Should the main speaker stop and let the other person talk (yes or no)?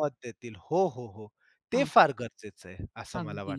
yes